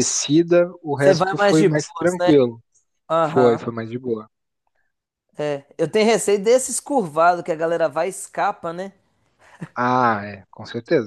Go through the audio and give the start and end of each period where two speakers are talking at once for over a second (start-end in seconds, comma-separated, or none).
1.0-2.3